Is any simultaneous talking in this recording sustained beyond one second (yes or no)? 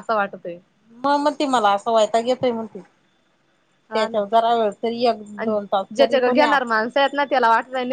no